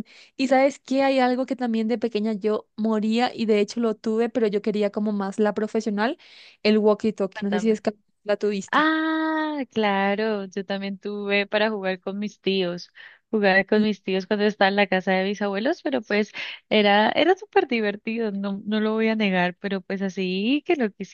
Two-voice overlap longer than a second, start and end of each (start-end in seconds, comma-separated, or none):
none